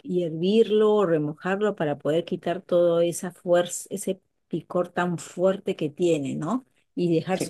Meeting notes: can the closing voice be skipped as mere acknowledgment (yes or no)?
yes